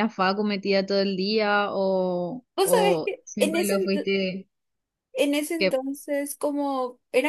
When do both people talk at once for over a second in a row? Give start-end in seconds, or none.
2.6-4.1